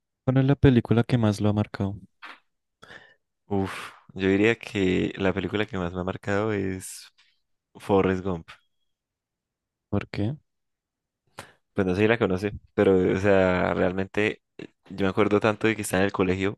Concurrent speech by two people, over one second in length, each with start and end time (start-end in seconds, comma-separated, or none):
none